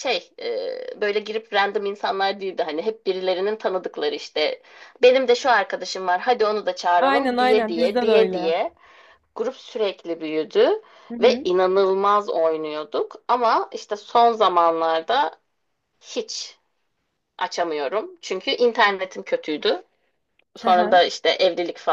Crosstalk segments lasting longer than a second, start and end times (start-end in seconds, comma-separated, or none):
7.0-8.5